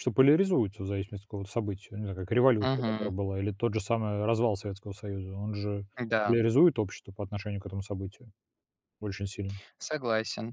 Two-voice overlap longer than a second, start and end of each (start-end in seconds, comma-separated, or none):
none